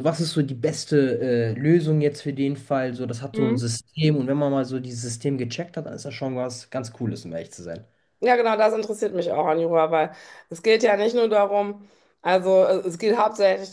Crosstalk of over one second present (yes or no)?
no